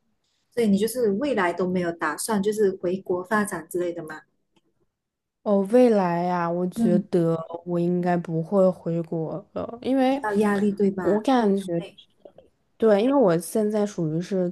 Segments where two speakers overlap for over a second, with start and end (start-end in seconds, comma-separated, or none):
none